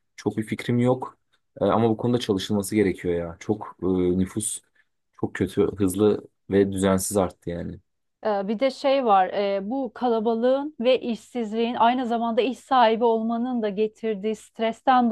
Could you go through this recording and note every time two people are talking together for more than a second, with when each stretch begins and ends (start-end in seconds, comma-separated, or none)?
none